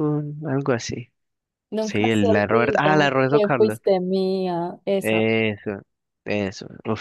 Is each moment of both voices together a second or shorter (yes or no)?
no